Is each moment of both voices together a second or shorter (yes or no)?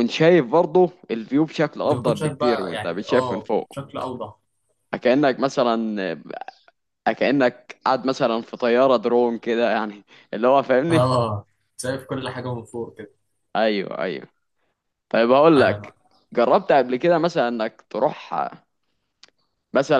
no